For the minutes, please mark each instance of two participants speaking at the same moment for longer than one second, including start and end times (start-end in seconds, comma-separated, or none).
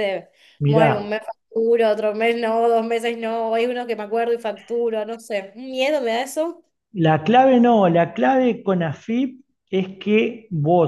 none